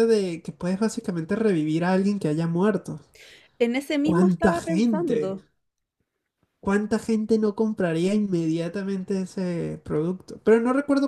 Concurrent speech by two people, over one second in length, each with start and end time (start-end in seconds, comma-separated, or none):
4.0-5.4